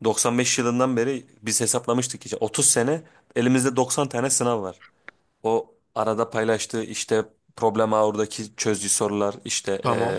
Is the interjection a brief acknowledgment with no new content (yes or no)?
yes